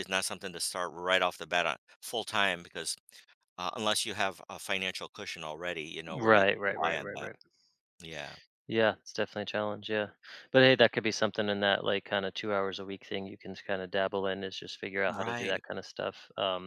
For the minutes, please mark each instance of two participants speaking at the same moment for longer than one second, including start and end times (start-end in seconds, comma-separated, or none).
6.1-7.3